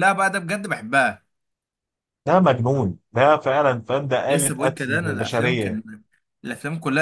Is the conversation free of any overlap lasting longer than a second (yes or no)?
no